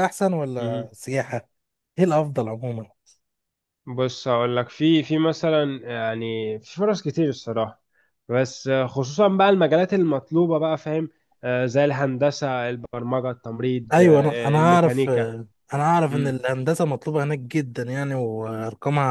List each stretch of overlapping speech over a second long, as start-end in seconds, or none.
13.9-15.3